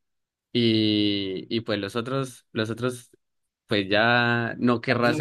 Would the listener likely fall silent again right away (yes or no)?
yes